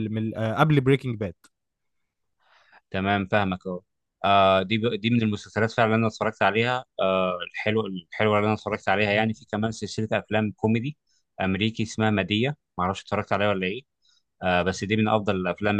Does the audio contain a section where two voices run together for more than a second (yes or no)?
no